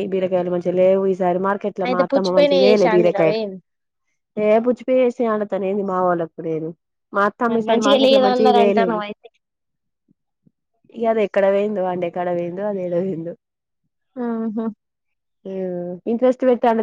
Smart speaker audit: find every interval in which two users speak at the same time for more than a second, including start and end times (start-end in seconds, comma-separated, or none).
1.9-3.4, 7.5-9.0